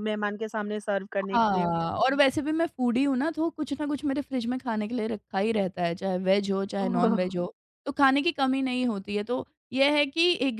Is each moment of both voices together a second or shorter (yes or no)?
yes